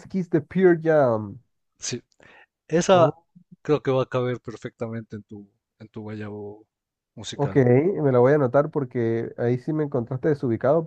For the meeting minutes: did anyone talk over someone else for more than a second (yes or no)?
no